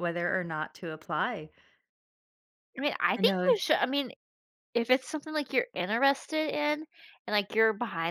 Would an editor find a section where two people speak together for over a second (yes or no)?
no